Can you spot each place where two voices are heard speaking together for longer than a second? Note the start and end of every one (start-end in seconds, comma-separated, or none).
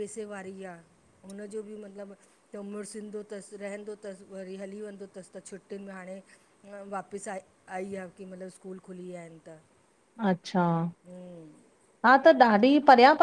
none